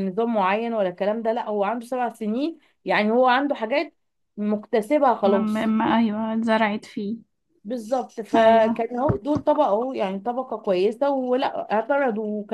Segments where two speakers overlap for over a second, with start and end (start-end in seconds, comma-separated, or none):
none